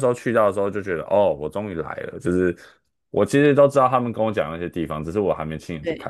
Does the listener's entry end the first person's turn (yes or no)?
no